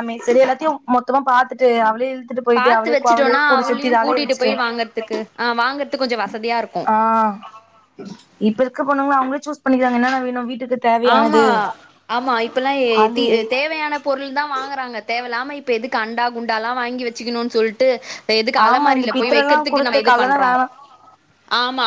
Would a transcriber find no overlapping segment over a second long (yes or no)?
no